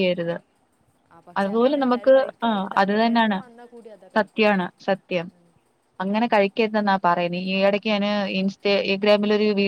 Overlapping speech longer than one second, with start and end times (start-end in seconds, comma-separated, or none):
1.4-3.4